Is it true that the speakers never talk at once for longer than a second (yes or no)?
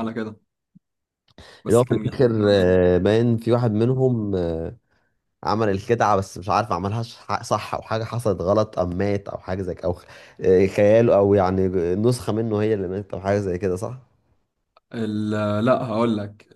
no